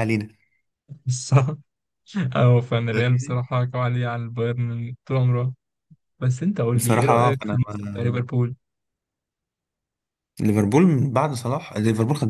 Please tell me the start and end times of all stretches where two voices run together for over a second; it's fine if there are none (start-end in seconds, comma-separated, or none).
6.8-8.3